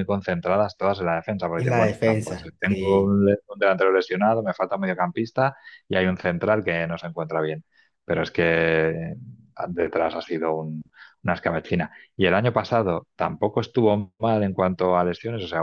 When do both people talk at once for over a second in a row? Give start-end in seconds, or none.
1.6-3.2